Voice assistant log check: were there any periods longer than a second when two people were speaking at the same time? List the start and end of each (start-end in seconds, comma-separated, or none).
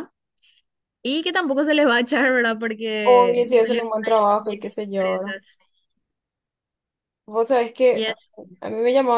3.0-5.3